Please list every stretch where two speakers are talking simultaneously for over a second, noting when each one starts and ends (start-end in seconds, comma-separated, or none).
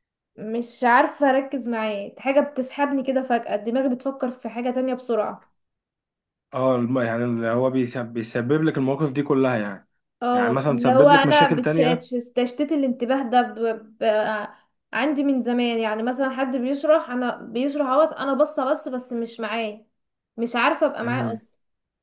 10.3-12.1